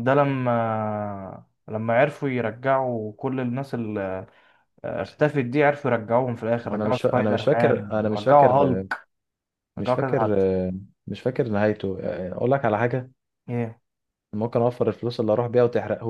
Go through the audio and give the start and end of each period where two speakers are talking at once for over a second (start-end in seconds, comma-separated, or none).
6.5-8.5